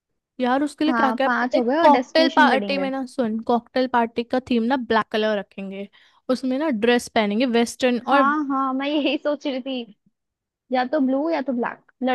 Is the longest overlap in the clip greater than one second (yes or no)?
yes